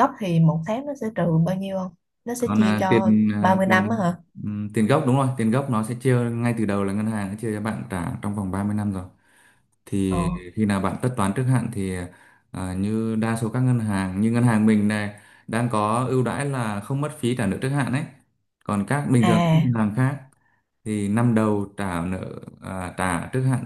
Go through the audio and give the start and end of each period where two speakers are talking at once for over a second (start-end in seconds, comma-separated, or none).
2.4-4.1